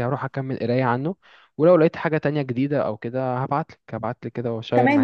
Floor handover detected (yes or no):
yes